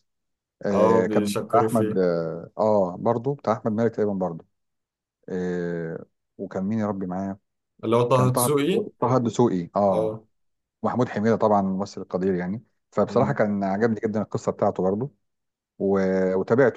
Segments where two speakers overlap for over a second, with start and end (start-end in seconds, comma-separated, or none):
0.7-2.0